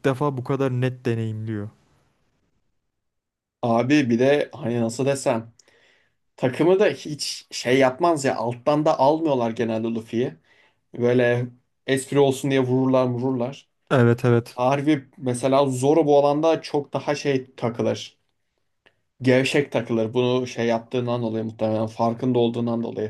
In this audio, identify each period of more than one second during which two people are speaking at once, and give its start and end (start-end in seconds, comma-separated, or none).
none